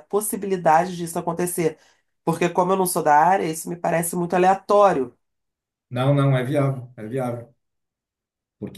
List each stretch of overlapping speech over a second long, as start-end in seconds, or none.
none